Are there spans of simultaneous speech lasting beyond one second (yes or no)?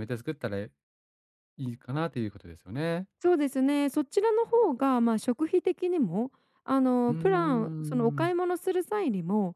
yes